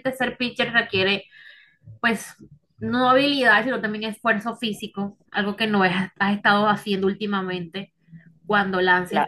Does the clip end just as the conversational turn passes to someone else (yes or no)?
no